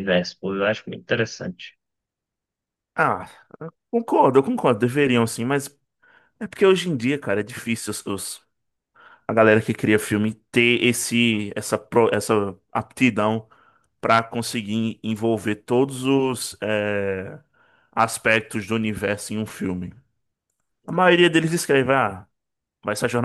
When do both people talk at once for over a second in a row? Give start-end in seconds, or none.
none